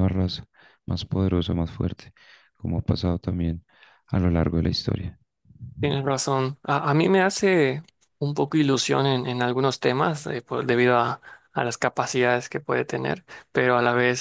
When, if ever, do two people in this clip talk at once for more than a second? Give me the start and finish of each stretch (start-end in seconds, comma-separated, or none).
none